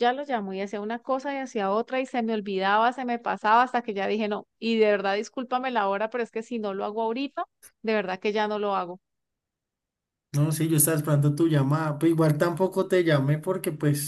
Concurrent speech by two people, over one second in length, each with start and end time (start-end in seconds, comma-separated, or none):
none